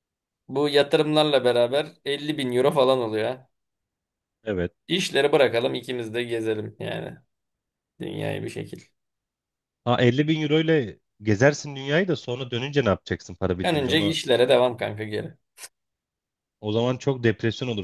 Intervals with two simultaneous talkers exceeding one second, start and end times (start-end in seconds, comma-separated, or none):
none